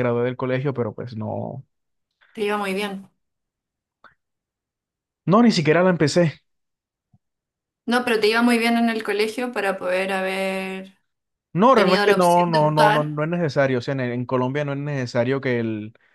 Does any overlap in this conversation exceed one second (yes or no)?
yes